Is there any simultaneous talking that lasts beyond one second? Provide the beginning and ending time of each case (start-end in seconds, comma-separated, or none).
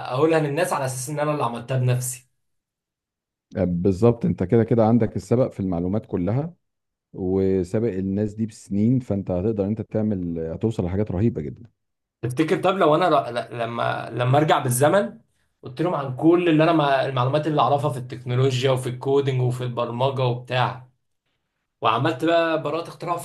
none